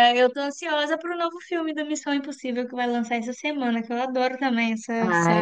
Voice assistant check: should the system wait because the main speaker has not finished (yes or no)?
no